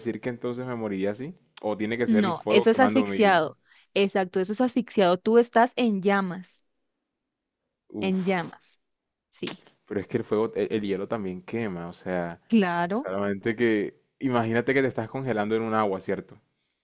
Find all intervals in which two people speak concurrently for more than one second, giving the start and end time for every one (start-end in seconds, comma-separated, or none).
2.1-3.4